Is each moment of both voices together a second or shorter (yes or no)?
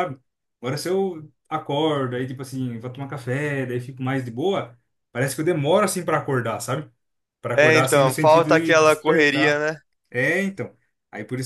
no